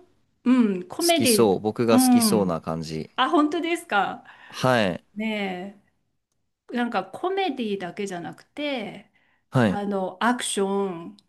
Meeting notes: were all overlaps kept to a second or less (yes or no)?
no